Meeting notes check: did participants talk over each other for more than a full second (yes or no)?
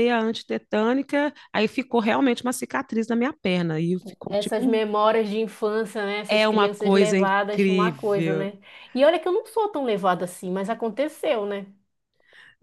yes